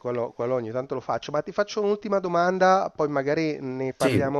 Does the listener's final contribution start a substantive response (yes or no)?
no